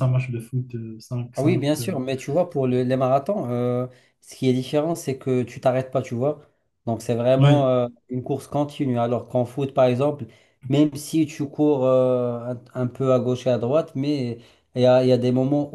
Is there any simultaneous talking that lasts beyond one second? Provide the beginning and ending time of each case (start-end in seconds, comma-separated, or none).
none